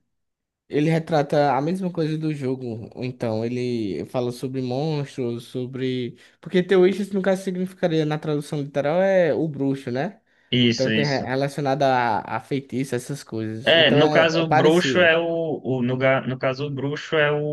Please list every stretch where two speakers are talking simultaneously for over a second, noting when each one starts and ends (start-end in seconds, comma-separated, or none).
13.6-15.1